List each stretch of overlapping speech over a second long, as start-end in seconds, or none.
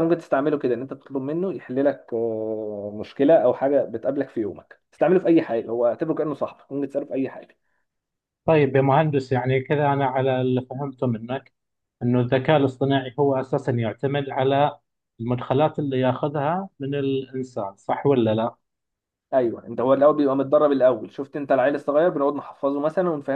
none